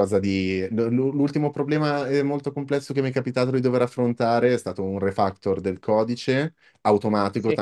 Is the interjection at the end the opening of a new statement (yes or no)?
no